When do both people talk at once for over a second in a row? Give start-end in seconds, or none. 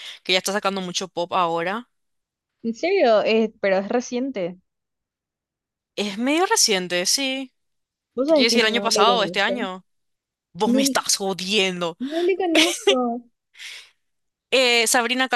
8.2-9.7